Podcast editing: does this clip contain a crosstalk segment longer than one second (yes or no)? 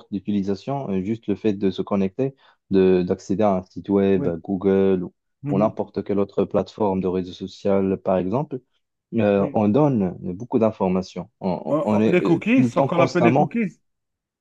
yes